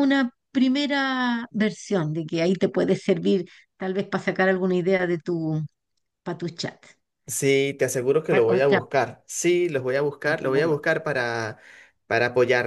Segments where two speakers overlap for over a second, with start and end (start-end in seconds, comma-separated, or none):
none